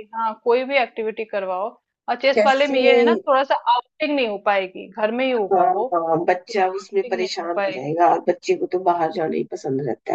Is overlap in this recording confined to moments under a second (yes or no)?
no